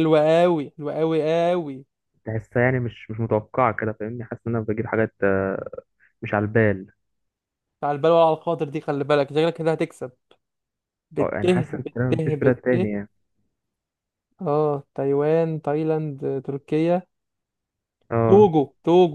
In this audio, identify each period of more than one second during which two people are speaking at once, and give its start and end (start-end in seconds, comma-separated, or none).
11.2-12.8